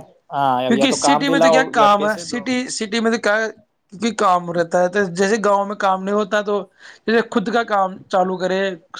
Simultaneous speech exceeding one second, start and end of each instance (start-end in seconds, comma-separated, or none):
0.7-2.4